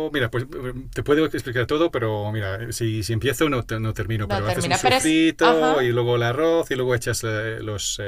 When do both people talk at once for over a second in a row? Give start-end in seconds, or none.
4.2-6.0